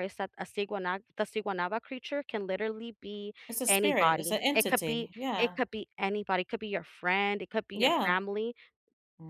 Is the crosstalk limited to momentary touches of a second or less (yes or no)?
no